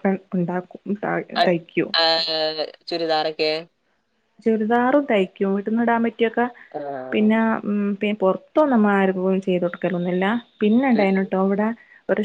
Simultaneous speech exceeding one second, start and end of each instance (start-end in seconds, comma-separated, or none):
none